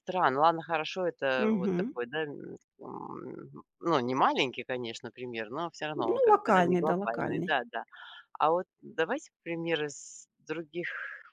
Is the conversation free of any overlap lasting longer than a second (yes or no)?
no